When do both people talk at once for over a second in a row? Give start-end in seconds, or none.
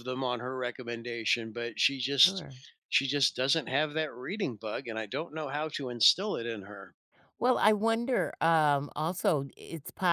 none